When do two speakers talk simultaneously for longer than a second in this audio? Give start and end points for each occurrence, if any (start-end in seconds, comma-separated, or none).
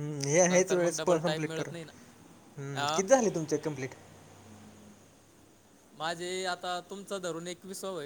0.5-1.9